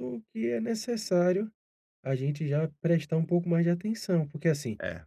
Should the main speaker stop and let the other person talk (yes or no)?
no